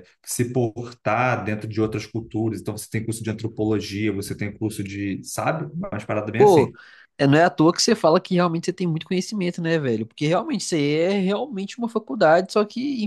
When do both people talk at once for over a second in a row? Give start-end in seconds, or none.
none